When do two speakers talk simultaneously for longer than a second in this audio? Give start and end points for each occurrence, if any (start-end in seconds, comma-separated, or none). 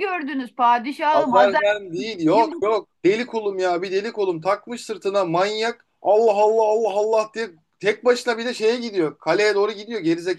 1.1-2.6